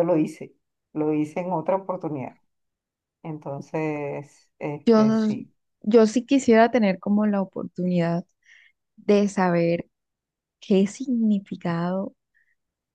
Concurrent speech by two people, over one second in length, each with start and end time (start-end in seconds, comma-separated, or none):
none